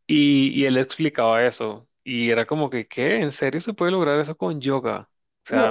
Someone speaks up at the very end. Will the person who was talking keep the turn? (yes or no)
no